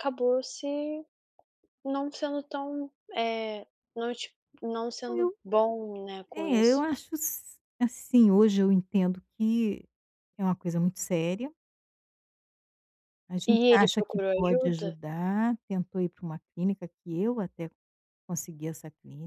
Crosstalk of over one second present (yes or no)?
yes